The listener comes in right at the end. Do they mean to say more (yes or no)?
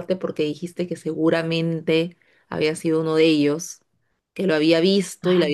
no